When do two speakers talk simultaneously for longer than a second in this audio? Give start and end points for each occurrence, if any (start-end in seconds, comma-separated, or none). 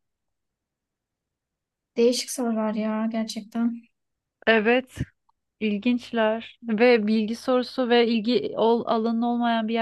none